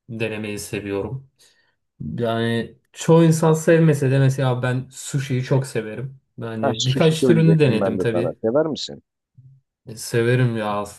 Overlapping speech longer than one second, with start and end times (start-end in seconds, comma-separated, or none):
6.6-8.4